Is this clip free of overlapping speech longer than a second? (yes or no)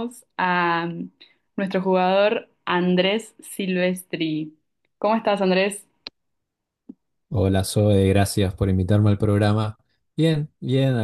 yes